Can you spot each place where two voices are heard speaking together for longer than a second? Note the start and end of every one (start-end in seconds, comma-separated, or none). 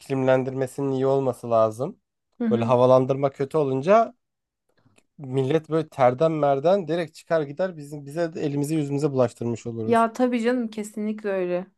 none